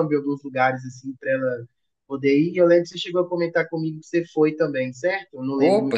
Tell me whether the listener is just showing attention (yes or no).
no